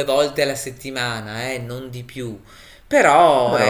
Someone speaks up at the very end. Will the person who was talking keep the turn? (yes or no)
yes